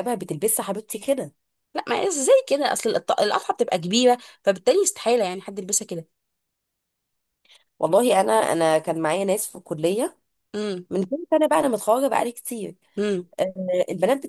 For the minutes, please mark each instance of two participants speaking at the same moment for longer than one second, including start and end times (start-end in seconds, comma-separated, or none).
none